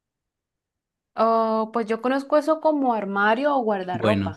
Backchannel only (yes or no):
no